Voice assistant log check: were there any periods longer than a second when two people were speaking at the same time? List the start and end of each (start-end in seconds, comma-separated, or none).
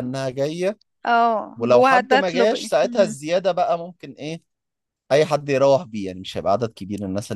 1.6-3.2